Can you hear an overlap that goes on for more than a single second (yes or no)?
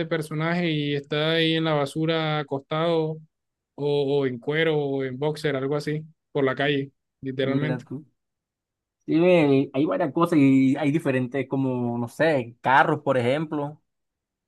no